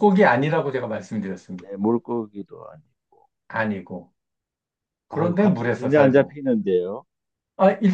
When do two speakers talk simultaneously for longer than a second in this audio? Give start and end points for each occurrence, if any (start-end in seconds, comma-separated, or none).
5.1-6.4